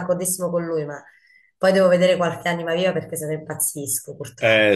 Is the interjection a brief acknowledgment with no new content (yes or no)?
no